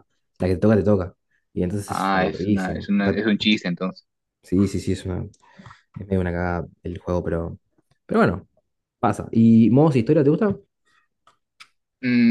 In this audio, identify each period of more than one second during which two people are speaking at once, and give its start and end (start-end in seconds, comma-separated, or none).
1.9-3.2